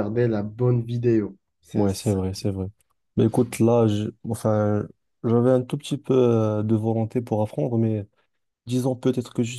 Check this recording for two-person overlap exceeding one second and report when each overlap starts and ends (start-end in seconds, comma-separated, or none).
none